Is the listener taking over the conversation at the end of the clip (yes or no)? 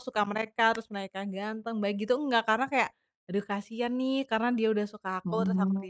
no